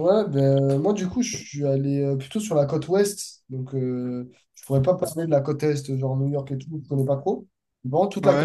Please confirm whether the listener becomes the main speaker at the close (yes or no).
no